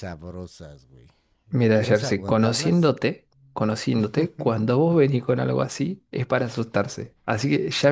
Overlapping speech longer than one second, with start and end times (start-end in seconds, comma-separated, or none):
1.7-2.9